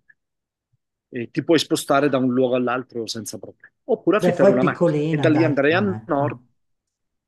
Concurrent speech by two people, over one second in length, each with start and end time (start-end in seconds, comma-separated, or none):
4.2-6.3